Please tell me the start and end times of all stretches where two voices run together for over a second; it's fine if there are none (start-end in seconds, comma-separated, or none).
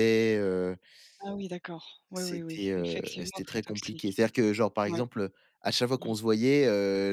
2.1-4.2